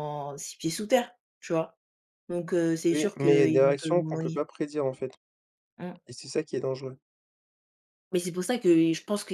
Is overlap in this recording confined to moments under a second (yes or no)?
no